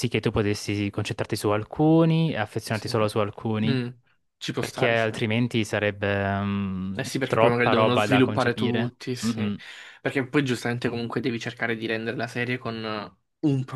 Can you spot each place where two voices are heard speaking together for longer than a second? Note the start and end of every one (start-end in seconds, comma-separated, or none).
7.0-9.5